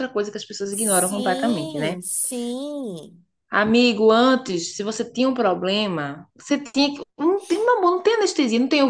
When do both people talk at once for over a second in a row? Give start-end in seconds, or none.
0.7-2.0